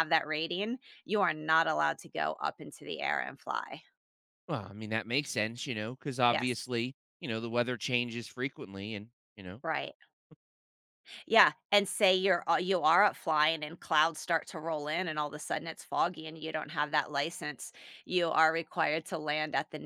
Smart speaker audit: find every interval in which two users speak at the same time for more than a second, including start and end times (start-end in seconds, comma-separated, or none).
none